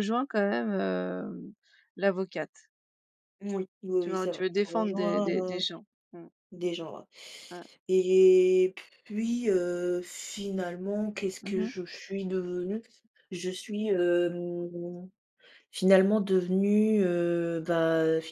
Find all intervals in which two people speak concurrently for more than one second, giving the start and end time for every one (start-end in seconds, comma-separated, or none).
4.0-5.6